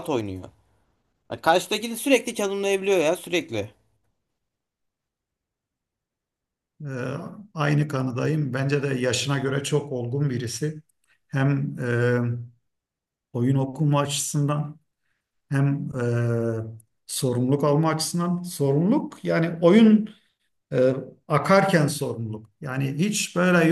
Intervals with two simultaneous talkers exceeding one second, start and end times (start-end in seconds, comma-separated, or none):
none